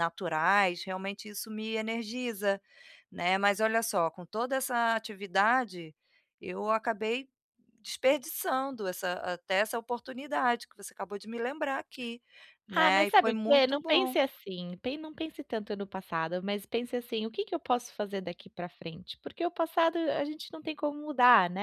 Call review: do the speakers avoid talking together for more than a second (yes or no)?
no